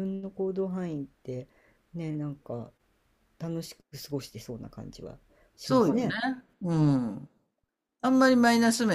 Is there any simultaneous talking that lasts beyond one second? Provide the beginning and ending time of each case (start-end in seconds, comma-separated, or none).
none